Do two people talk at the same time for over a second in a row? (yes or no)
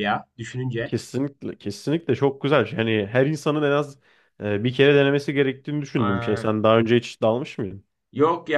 no